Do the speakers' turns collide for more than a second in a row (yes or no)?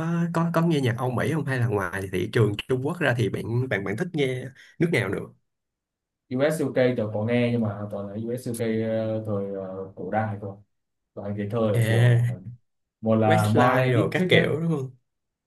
yes